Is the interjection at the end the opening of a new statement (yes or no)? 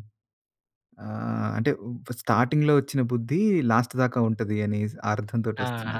yes